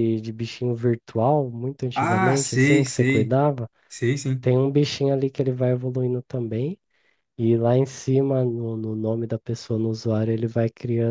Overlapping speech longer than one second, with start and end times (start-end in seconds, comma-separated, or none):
1.9-3.4